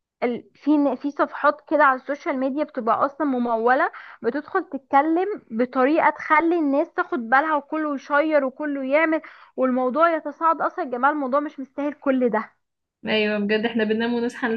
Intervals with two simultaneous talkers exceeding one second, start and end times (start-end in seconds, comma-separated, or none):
none